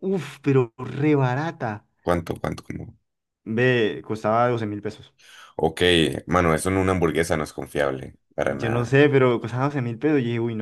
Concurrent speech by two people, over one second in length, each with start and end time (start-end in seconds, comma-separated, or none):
none